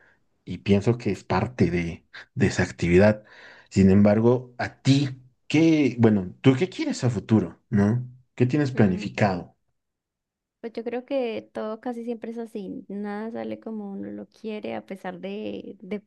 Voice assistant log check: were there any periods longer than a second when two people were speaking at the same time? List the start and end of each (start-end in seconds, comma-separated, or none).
none